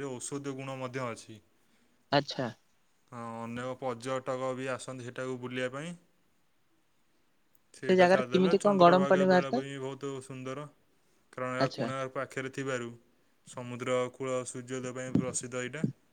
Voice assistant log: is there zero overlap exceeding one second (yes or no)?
no